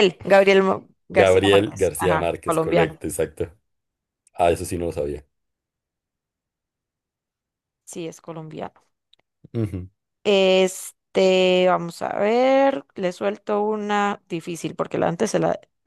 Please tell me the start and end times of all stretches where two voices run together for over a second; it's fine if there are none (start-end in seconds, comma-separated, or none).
1.1-3.0